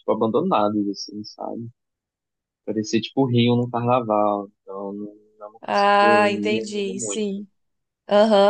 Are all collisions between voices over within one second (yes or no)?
no